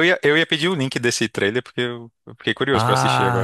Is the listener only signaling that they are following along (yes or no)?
no